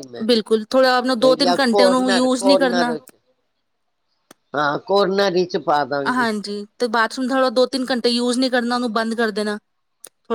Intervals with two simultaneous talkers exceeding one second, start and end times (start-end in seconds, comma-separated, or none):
1.4-2.9